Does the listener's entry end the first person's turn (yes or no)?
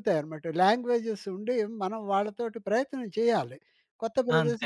no